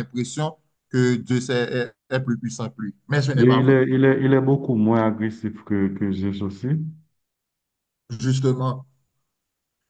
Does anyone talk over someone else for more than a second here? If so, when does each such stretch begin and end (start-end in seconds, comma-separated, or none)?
none